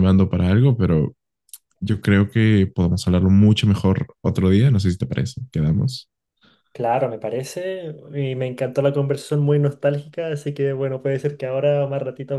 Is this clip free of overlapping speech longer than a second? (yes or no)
yes